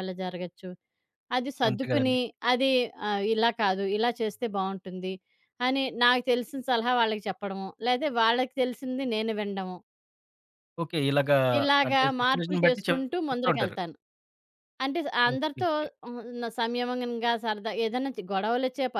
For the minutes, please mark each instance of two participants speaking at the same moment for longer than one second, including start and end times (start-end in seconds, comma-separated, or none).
11.9-13.8